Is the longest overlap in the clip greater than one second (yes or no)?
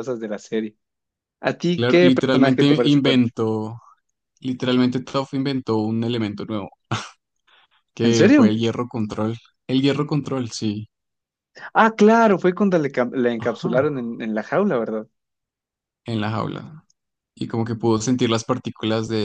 yes